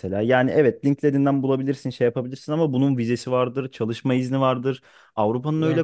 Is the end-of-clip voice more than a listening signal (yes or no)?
no